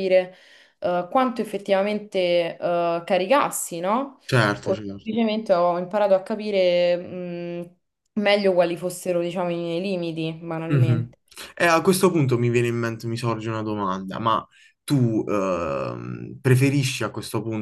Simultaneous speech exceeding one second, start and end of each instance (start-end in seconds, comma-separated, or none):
none